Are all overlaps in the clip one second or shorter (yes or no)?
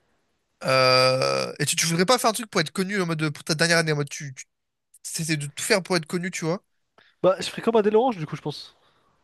yes